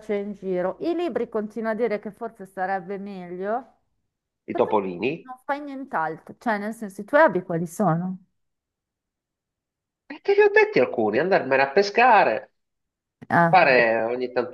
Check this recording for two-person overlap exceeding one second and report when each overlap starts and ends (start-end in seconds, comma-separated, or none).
none